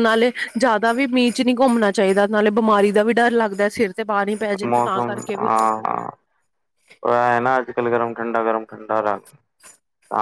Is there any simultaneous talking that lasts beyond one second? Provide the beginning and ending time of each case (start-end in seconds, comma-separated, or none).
none